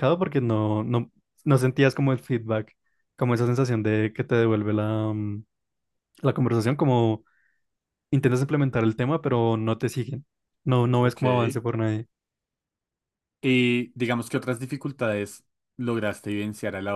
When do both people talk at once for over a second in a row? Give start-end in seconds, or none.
none